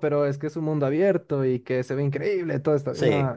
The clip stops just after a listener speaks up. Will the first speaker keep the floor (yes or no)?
yes